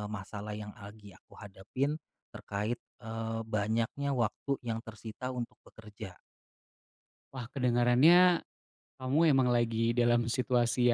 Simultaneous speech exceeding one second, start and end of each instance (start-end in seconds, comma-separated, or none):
none